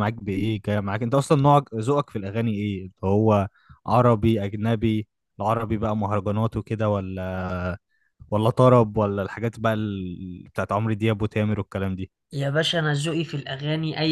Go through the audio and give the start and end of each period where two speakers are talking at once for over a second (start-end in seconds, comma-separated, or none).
none